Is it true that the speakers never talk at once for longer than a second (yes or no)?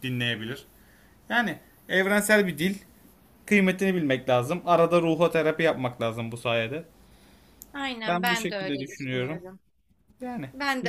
no